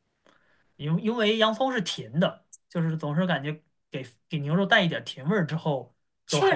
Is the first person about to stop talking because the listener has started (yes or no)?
yes